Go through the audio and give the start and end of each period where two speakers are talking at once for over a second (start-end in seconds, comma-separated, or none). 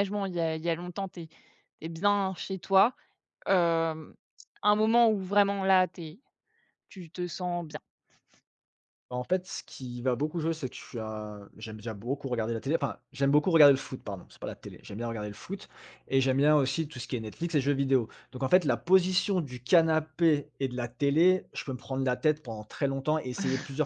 none